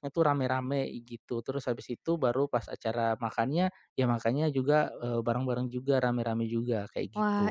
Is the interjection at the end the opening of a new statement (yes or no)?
yes